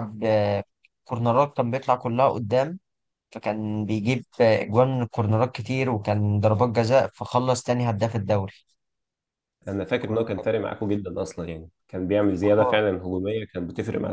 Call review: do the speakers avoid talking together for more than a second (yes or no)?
yes